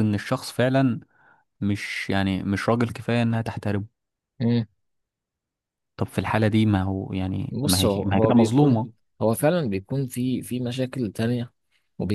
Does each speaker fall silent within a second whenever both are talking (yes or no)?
no